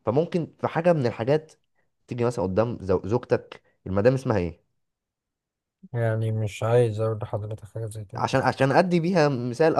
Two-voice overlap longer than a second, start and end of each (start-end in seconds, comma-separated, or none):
none